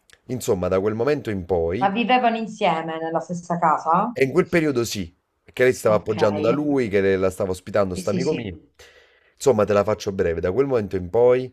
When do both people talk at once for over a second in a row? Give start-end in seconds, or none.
none